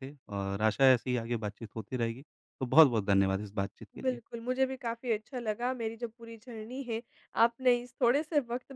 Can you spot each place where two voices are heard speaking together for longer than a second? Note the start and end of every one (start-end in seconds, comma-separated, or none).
none